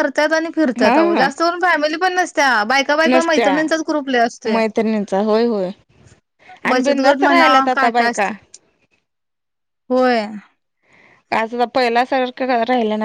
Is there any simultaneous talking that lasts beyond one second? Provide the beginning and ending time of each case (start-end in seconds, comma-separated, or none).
6.7-8.3